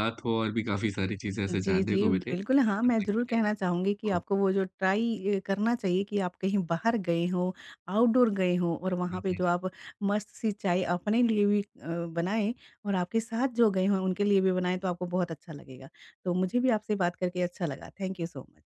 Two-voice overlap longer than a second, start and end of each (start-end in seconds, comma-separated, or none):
1.5-3.4